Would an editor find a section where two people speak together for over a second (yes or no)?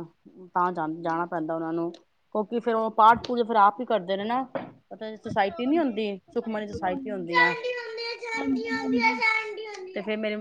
yes